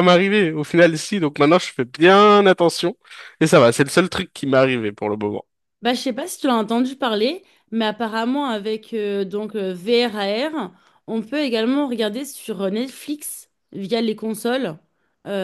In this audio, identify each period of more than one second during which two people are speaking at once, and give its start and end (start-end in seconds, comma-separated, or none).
none